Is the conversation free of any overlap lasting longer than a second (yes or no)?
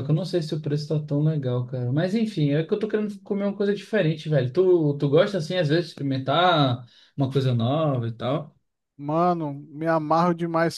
yes